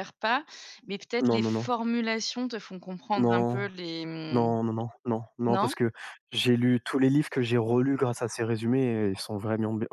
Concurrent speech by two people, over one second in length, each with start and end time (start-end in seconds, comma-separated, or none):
none